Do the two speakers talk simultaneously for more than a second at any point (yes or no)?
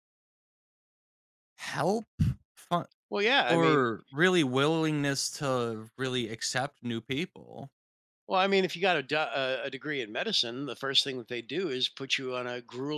no